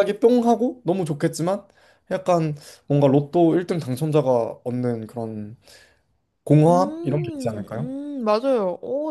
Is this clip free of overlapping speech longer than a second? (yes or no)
no